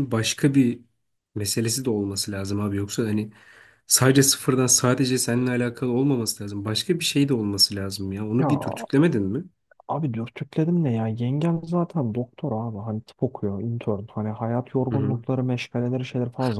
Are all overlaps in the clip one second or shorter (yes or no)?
yes